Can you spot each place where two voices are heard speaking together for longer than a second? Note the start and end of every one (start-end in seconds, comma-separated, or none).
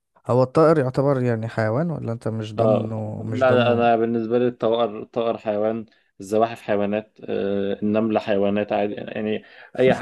2.6-3.9